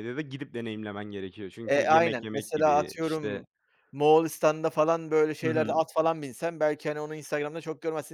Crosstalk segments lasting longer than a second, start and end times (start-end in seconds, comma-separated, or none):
1.6-3.4